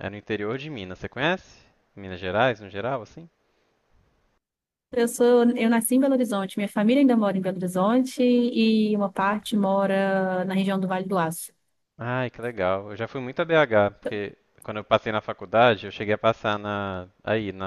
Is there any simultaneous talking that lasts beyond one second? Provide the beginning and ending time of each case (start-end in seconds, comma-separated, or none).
none